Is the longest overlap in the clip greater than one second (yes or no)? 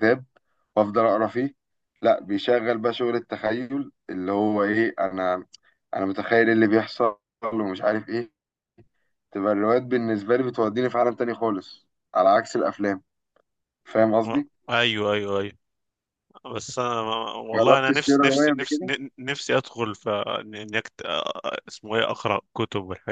yes